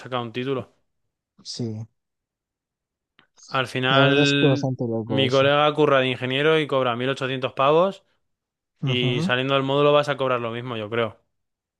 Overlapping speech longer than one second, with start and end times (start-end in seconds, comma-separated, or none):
3.9-5.5